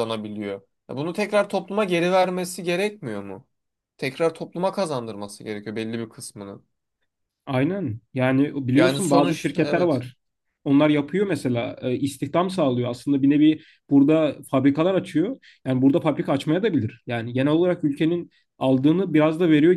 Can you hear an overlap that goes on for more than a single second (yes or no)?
yes